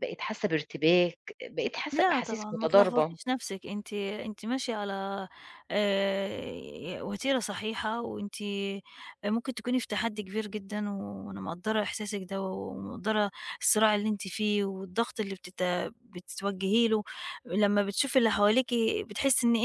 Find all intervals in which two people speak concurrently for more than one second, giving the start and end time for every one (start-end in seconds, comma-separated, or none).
1.9-3.2